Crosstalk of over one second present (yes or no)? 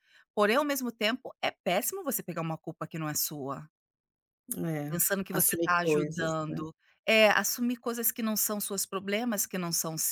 yes